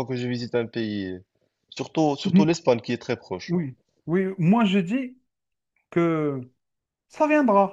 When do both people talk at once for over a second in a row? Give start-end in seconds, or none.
none